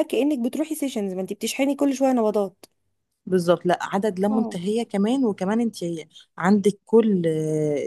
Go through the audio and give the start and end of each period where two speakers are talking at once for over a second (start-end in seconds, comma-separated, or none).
none